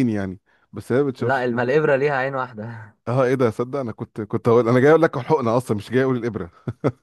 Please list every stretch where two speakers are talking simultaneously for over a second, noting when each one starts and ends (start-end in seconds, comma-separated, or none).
none